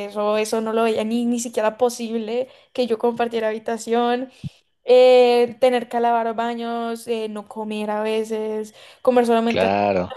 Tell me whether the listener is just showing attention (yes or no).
yes